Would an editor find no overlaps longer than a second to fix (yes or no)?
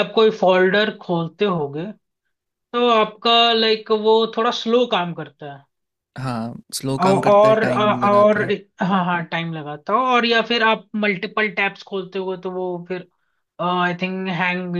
no